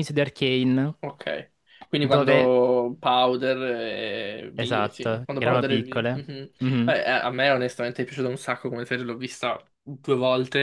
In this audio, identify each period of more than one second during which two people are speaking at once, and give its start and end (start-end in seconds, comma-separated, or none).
4.5-6.2